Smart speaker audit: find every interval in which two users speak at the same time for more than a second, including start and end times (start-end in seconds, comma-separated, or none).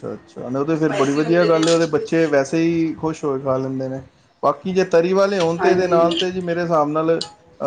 0.8-2.6